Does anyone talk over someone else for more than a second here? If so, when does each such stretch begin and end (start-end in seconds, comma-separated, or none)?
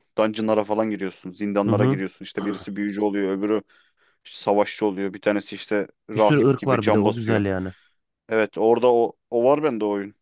6.1-7.4